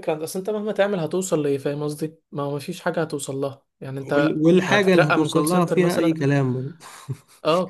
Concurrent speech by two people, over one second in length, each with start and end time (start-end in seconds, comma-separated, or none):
4.2-6.2